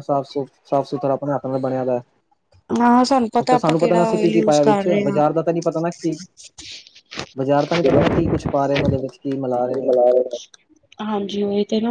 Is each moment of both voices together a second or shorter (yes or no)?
no